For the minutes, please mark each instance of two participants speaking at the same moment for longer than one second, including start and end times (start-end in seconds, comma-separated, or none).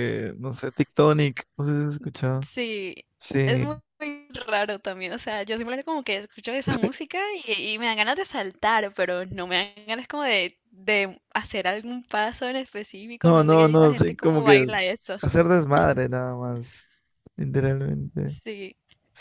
13.2-15.2